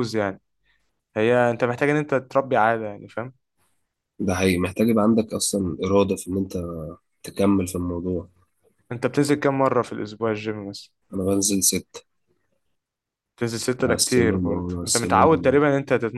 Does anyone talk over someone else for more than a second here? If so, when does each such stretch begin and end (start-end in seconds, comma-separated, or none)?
13.8-15.6